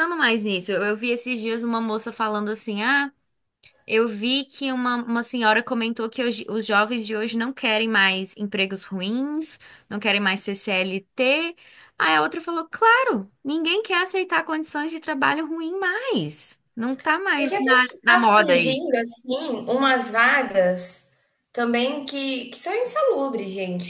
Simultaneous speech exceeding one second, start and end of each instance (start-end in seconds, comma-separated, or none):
17.4-18.9